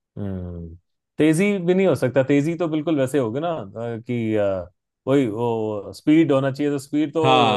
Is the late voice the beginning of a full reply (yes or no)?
no